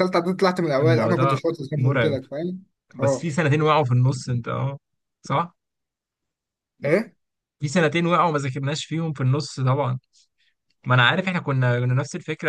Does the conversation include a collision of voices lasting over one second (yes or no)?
yes